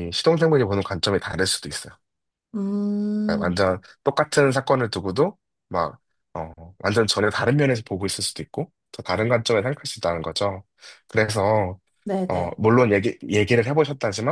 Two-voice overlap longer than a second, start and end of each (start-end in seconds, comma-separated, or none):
none